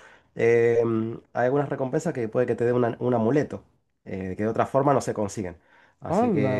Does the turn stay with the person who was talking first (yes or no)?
no